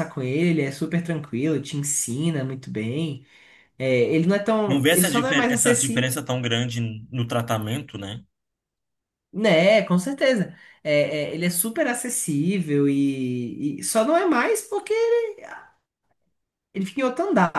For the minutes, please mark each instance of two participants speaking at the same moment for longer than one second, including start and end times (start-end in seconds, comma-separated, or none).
4.7-6.1